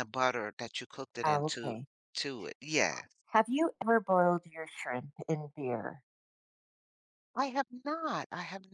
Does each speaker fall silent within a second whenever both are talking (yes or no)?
yes